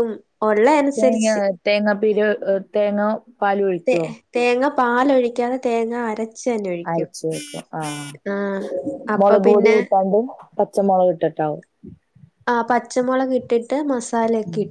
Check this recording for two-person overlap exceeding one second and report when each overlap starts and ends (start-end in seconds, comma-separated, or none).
none